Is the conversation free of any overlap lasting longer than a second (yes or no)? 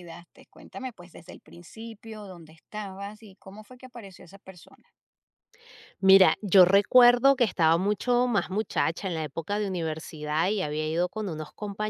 yes